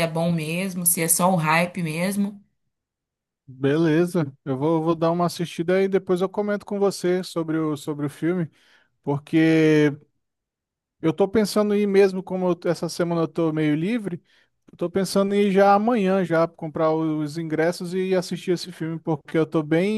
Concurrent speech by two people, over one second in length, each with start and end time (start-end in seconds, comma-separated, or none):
none